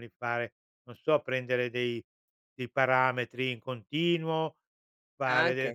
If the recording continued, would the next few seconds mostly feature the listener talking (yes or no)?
no